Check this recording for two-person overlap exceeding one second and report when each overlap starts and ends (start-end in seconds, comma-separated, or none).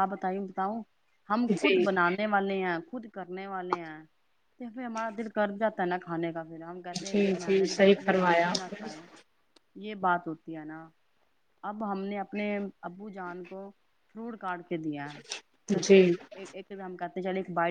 6.8-8.9